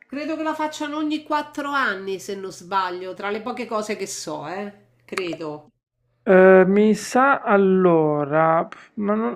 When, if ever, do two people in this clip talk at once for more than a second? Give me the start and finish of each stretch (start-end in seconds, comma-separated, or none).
none